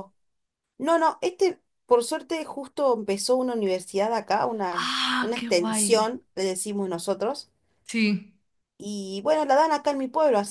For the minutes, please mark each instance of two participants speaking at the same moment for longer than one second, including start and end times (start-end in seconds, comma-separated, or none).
4.7-6.1